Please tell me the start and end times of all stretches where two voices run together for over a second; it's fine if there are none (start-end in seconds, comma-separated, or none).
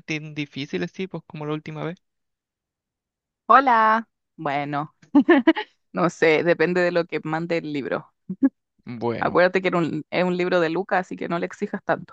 none